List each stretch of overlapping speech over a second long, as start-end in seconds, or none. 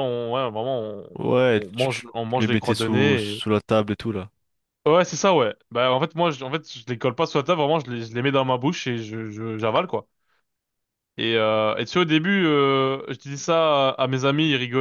1.6-3.4